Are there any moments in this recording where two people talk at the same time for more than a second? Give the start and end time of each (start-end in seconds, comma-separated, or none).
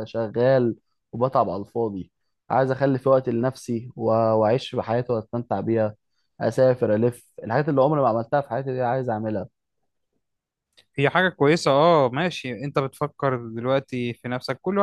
none